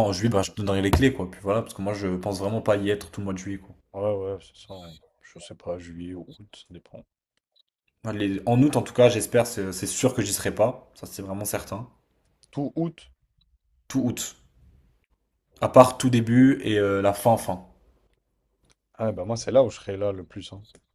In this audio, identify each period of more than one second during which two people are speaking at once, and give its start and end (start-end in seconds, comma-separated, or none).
none